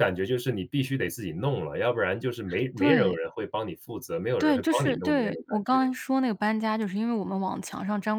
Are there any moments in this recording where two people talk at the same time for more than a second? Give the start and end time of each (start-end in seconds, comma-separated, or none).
4.4-5.8